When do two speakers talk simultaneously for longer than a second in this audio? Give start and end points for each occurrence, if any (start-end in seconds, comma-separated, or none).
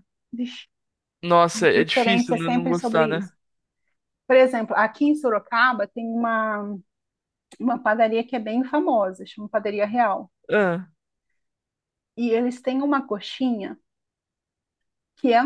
1.5-3.3